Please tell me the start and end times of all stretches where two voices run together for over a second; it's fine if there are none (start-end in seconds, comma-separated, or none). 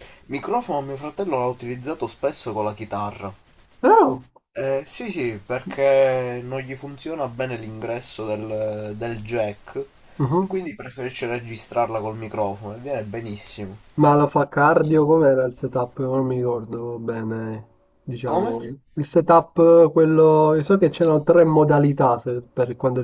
none